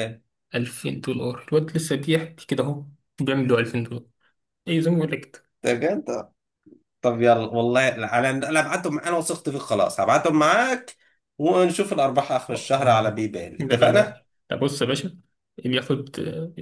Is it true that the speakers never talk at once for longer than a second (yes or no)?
no